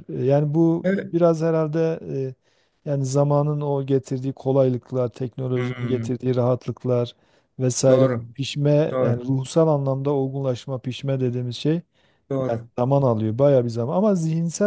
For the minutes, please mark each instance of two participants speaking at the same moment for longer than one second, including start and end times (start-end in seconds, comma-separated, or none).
none